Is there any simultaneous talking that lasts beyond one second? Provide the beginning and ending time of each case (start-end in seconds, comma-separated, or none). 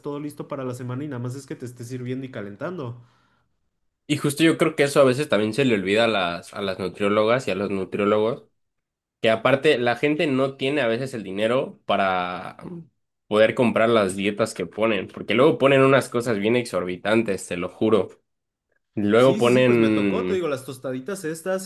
19.2-20.5